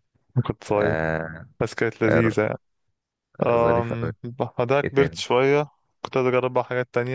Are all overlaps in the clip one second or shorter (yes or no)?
yes